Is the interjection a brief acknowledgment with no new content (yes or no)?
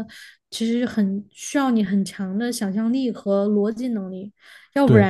yes